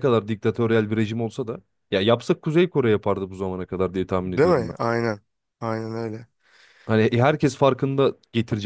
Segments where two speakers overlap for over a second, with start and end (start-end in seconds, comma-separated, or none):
none